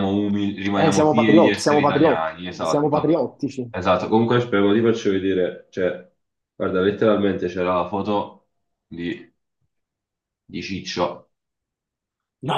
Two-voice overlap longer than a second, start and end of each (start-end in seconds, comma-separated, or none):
0.7-3.1